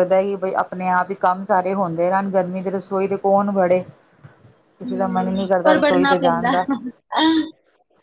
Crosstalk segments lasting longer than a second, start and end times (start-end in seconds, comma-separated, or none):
4.8-6.5